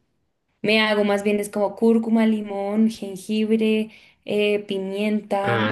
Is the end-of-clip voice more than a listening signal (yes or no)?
no